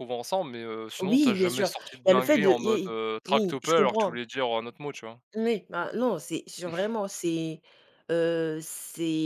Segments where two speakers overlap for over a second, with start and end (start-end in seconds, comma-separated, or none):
1.0-4.2